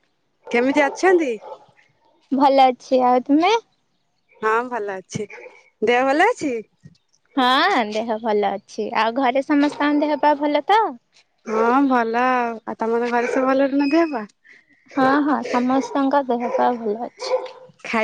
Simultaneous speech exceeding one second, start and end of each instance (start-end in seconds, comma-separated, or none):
none